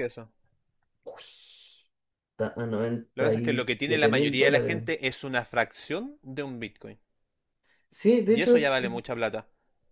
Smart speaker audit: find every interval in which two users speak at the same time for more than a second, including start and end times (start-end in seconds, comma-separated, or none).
3.1-4.8